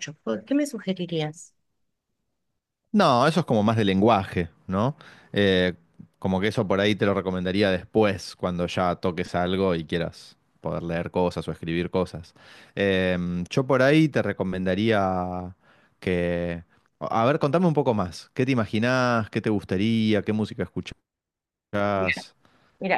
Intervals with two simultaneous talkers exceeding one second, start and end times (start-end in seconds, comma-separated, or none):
none